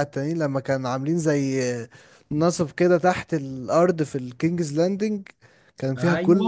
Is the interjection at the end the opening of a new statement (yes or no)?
yes